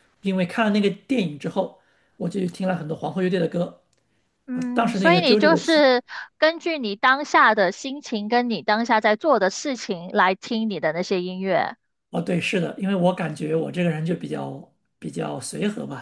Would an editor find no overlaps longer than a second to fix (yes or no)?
no